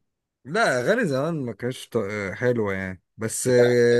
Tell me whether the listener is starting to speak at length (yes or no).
no